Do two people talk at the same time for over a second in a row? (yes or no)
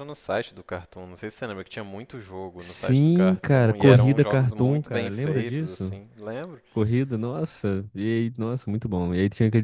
yes